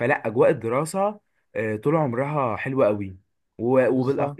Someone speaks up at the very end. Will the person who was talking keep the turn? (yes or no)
yes